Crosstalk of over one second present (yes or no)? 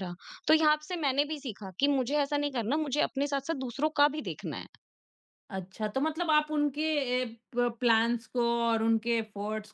no